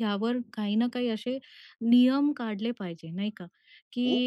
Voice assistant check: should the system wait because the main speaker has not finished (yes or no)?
yes